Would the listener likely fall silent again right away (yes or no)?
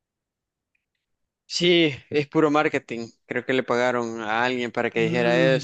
no